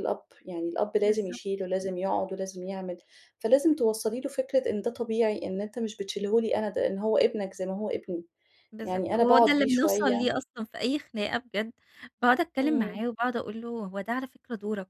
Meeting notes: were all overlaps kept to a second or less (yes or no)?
no